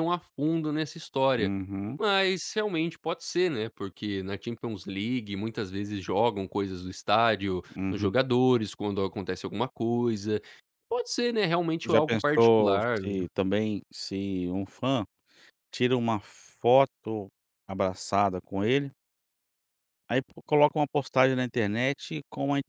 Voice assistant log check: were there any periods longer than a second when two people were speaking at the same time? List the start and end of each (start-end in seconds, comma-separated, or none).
11.8-13.2